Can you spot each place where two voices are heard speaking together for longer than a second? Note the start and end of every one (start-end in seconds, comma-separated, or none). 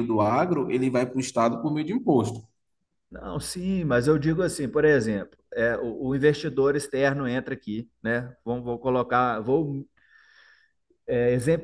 none